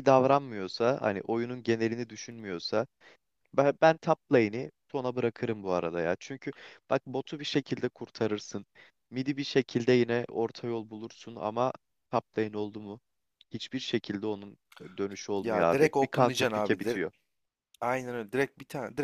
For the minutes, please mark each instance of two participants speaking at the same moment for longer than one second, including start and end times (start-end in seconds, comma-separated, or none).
15.4-17.0